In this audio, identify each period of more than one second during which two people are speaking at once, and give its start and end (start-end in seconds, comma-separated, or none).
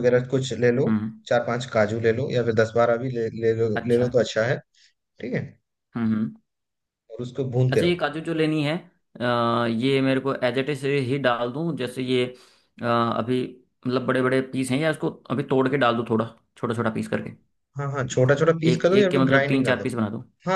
18.7-19.9